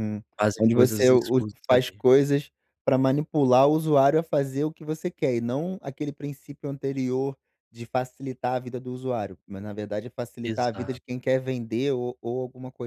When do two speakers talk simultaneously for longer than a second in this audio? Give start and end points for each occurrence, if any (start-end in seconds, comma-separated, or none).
0.6-2.0